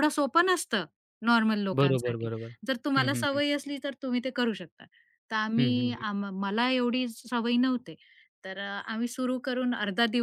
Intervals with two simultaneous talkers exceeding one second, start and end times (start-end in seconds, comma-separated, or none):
none